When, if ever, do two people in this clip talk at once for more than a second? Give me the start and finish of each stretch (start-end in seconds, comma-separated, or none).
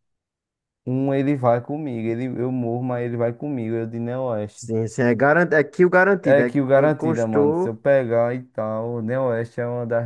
6.2-7.8